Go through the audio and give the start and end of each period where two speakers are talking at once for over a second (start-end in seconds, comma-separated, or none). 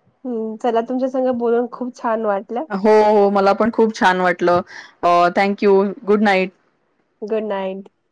none